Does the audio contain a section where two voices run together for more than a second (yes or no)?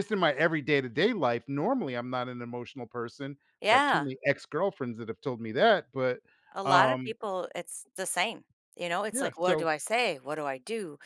no